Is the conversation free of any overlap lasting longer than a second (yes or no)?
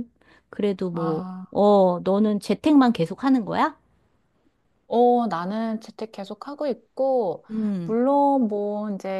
yes